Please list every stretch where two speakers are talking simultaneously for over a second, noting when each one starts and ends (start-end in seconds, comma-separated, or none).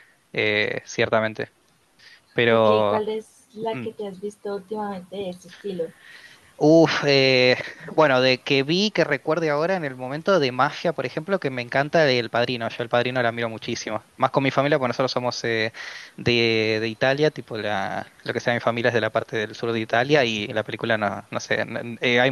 none